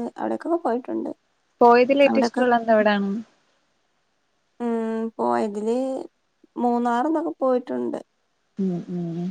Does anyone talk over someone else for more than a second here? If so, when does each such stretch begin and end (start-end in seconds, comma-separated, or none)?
none